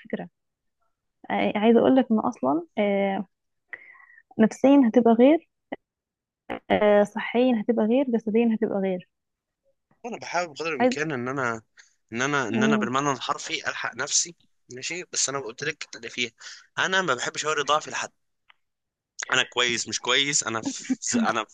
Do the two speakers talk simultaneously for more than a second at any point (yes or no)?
no